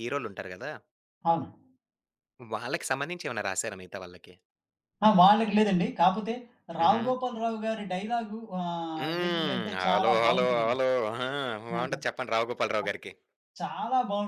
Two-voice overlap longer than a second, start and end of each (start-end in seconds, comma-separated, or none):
9.0-10.8